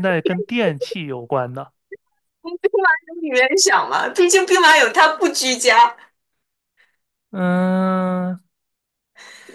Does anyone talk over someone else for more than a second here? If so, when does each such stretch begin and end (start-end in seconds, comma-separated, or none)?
none